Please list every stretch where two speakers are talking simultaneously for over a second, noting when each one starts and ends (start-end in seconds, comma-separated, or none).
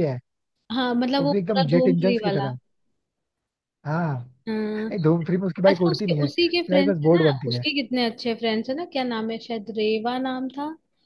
1.2-2.5, 5.7-7.6